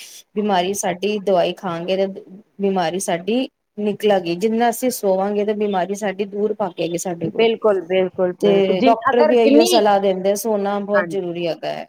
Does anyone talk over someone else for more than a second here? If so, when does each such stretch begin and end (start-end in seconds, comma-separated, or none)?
8.4-9.8